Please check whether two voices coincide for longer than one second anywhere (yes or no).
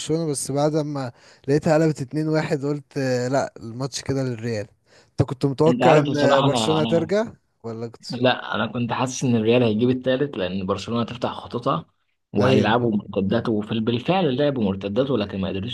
yes